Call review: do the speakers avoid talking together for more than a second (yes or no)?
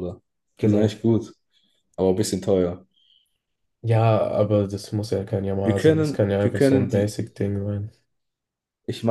no